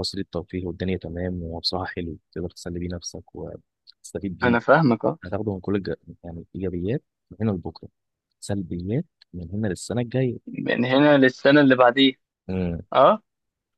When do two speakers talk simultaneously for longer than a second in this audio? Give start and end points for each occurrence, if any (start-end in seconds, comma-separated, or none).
none